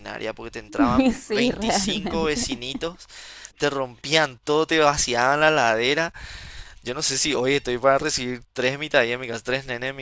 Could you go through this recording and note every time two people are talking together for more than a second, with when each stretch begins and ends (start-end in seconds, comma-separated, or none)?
1.0-2.5